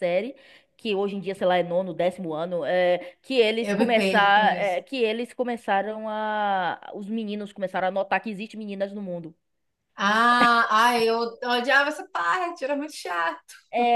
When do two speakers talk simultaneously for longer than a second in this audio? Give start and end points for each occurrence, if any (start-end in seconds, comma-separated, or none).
3.6-4.9